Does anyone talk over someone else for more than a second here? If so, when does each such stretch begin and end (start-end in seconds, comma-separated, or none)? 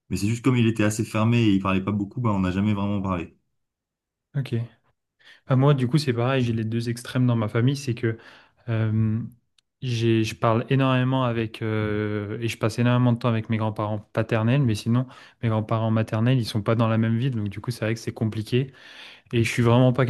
none